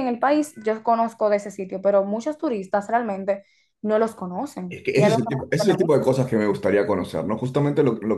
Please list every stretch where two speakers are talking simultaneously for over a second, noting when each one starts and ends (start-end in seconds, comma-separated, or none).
4.7-6.0